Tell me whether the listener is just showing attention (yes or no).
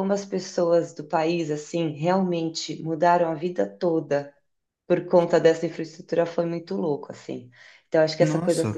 yes